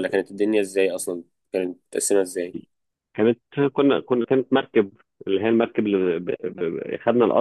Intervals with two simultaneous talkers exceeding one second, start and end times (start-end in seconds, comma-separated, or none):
none